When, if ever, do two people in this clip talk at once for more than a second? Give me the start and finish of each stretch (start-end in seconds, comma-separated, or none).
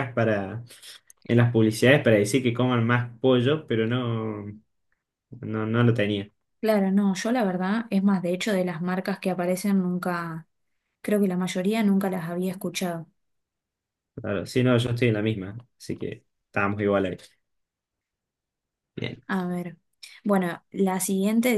none